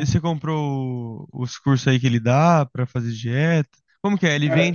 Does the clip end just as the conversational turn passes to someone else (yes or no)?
no